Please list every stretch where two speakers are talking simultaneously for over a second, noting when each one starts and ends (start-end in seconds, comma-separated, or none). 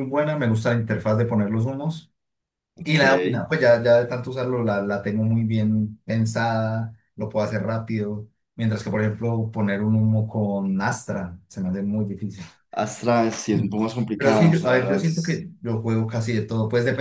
14.2-15.4